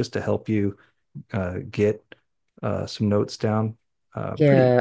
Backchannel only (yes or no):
no